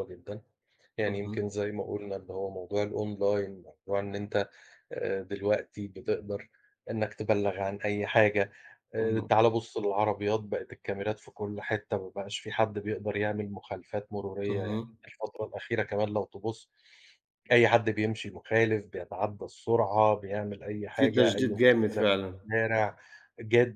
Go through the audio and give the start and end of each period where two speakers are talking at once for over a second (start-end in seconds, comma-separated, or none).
20.9-22.4